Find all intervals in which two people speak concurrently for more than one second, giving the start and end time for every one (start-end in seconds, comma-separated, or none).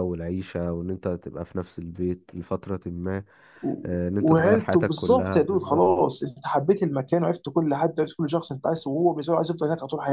4.2-5.9